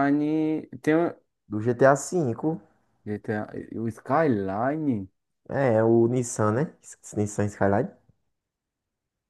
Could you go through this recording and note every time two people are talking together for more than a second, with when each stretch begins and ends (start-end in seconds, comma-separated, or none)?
none